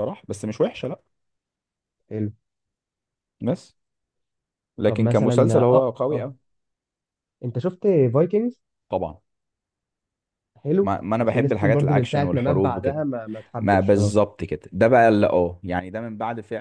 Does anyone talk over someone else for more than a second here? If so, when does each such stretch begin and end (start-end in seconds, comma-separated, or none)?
4.8-6.3, 10.8-13.0